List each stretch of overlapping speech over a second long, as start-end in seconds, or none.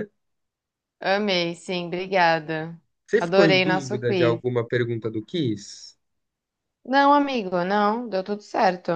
3.2-4.4